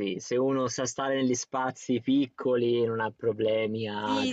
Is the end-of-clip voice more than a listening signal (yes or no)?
yes